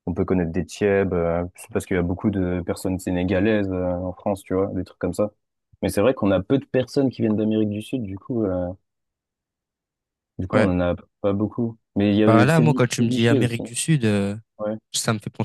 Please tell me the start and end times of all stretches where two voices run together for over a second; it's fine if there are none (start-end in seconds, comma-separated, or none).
12.3-13.6